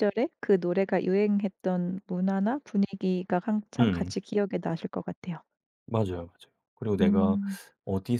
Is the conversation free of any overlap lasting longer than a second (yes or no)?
yes